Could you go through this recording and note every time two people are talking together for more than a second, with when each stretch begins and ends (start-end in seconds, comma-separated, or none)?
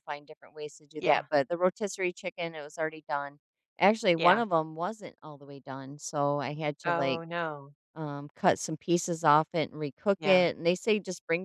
none